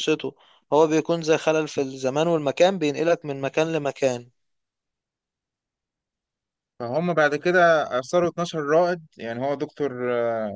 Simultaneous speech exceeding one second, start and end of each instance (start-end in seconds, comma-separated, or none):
none